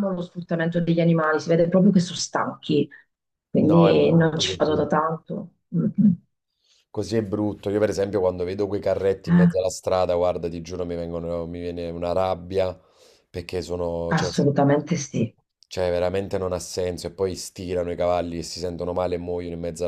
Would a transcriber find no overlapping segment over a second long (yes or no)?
no